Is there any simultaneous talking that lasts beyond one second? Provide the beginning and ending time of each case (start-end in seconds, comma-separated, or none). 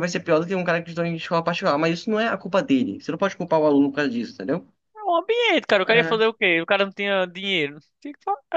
none